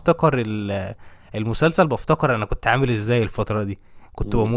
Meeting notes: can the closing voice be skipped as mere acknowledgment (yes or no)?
yes